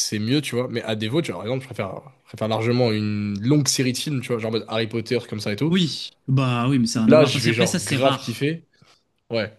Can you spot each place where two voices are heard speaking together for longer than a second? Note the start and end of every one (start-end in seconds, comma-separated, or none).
6.9-8.5